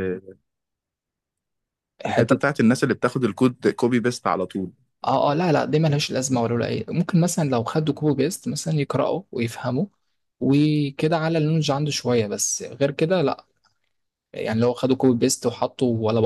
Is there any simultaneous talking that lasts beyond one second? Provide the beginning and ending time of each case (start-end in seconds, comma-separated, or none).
none